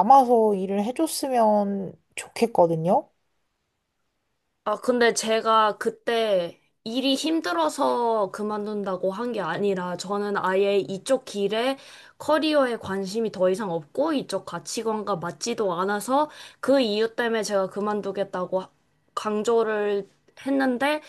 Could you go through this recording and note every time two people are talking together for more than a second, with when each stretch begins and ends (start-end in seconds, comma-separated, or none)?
none